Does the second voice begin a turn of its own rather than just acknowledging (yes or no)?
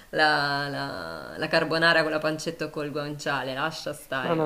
yes